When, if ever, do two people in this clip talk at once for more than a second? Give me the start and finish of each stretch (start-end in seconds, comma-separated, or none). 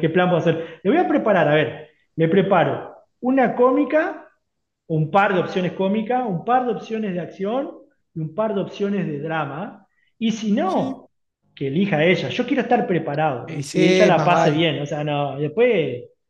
13.4-14.7